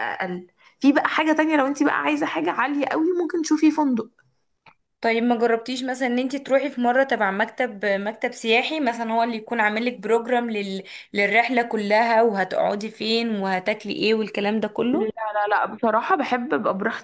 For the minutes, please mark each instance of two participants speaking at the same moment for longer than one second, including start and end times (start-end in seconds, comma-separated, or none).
none